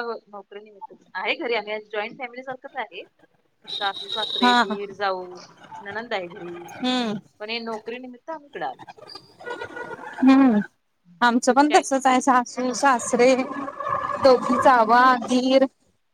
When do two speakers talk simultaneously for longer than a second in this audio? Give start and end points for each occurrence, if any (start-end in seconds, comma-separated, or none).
none